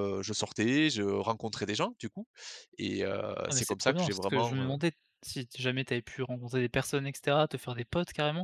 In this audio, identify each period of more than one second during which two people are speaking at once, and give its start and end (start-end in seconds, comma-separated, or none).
3.5-4.8